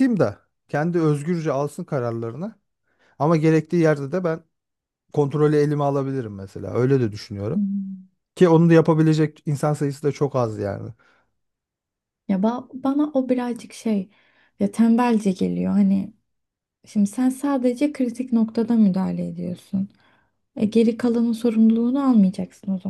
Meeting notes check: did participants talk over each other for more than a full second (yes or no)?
no